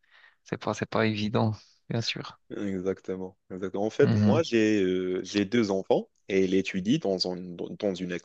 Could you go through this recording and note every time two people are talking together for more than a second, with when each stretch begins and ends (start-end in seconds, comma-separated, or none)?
none